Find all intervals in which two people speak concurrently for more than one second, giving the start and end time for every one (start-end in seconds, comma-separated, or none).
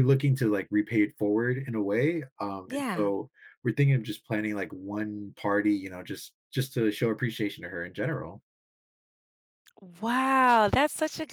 none